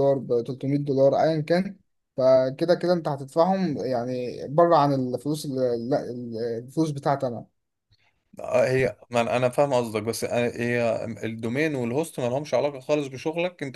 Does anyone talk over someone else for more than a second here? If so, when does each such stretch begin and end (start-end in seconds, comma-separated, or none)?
none